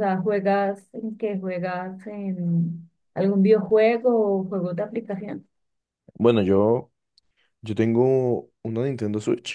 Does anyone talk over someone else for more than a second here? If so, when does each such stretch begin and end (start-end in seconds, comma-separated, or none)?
none